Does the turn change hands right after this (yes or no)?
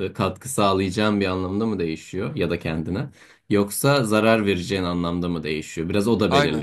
no